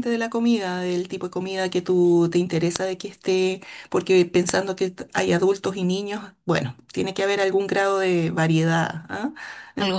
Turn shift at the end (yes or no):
no